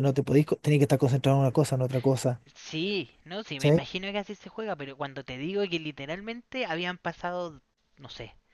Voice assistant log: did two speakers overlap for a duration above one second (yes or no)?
no